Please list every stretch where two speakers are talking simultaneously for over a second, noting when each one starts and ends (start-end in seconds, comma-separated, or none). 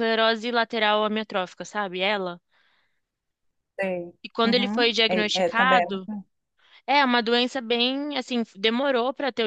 4.2-5.8